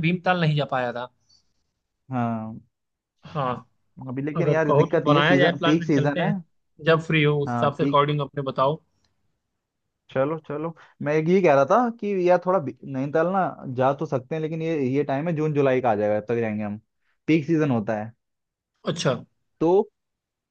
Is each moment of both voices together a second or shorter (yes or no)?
no